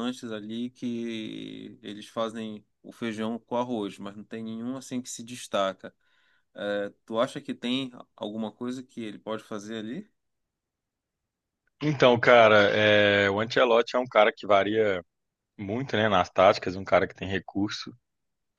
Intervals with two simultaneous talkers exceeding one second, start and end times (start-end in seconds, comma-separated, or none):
none